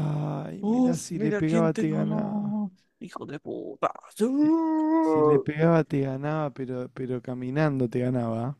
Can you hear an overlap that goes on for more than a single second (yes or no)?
yes